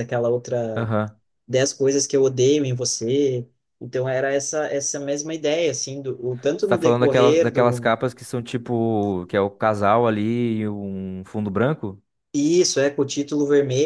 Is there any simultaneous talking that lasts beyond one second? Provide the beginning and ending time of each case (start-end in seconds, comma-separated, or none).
6.6-7.9